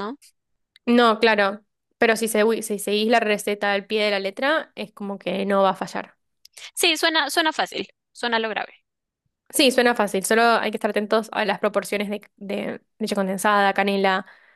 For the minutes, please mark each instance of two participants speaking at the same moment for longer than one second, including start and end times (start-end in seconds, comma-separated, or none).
none